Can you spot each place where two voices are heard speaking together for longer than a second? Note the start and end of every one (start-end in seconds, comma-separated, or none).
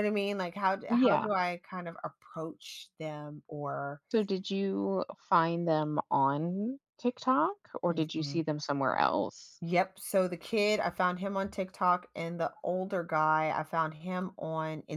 none